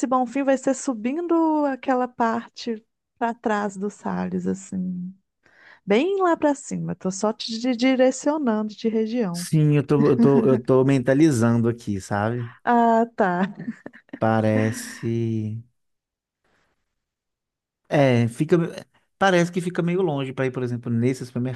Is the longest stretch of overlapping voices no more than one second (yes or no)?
yes